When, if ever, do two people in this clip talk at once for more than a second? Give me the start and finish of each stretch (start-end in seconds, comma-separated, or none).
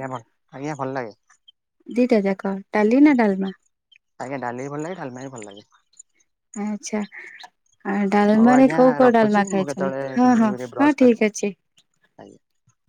8.4-11.2